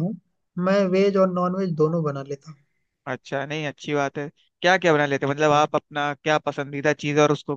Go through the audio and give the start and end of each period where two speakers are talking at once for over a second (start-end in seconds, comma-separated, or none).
none